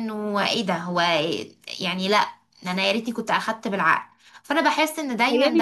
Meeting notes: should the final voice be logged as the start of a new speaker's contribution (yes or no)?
yes